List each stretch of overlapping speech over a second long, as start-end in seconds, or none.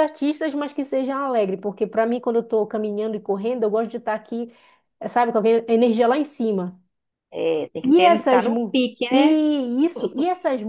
7.8-9.4